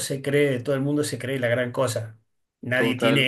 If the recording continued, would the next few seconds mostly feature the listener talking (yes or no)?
no